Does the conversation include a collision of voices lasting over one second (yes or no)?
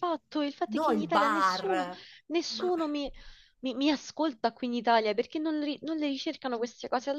yes